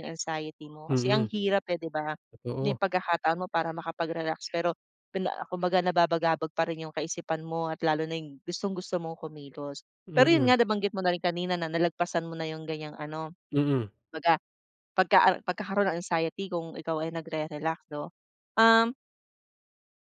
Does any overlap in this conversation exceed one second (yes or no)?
no